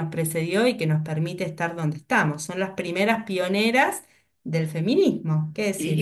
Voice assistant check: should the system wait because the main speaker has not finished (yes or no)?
no